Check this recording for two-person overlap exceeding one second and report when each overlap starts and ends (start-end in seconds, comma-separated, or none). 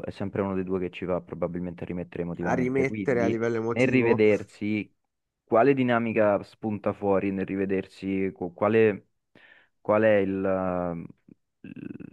2.4-4.2